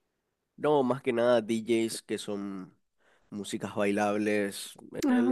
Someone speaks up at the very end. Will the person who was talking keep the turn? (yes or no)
yes